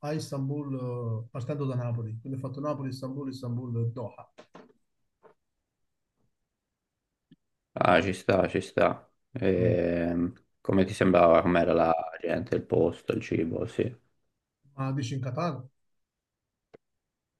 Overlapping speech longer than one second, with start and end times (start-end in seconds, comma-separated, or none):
none